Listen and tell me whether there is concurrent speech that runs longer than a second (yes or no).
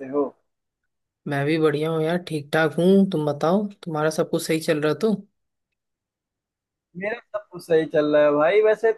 no